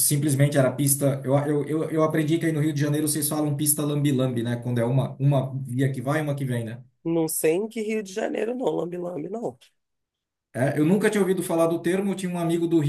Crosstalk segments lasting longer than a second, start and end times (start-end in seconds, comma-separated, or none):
none